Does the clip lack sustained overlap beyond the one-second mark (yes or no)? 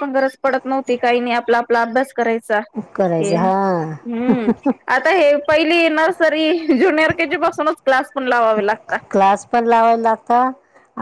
yes